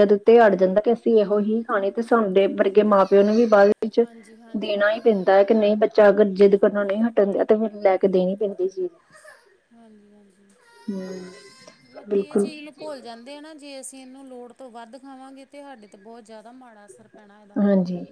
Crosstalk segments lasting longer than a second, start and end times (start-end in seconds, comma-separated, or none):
none